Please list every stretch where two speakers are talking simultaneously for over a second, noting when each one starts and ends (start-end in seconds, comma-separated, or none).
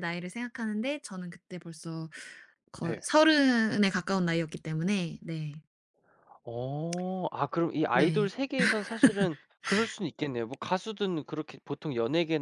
none